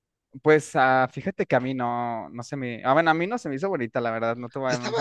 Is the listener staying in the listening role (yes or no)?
no